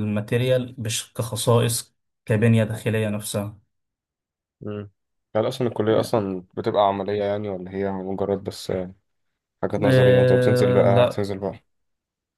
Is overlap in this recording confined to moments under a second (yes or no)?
no